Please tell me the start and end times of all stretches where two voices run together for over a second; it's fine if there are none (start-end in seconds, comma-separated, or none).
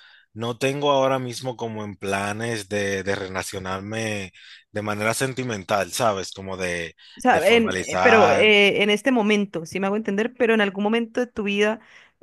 7.2-8.5